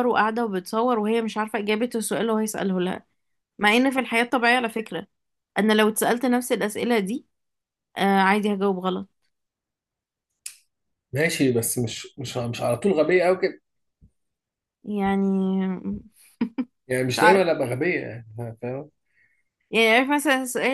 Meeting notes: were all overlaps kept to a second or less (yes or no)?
yes